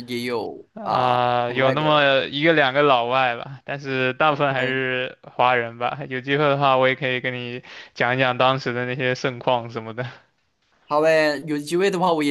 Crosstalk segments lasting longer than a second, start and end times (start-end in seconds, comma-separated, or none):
0.7-2.1